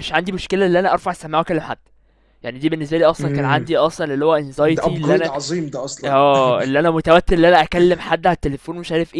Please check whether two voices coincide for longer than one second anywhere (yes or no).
no